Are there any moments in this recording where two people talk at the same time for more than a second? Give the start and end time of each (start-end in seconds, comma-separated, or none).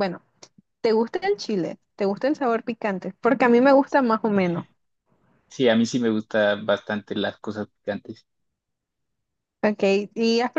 none